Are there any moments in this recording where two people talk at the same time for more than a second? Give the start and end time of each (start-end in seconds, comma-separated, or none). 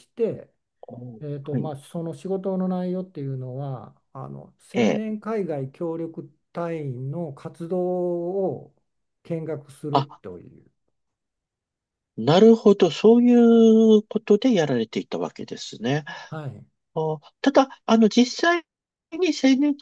none